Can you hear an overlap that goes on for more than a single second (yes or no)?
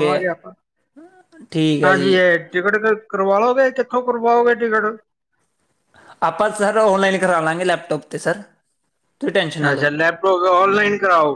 no